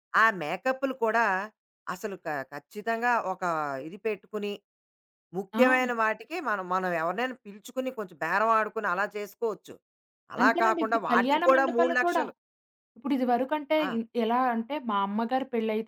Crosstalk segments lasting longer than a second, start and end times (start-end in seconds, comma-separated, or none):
10.4-12.2